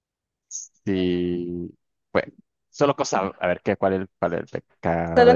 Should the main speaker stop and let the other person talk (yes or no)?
no